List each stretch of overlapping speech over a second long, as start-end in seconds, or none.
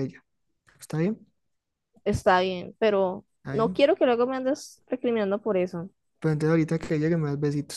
none